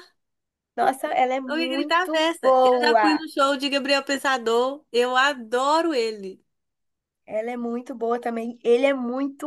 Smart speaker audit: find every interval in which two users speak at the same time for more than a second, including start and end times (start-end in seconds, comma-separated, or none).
1.5-3.2